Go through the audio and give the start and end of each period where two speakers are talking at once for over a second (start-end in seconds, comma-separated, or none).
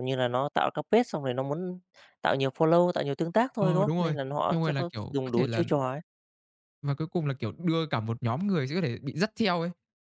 3.6-5.6